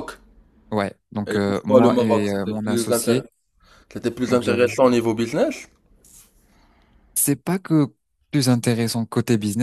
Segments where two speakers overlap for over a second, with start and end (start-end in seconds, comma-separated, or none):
1.3-3.2